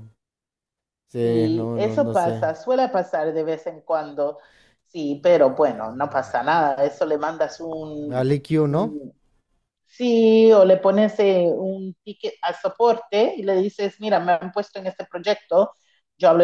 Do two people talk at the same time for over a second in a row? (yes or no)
yes